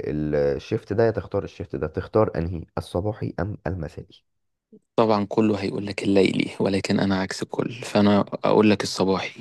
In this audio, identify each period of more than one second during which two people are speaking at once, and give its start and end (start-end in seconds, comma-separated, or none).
none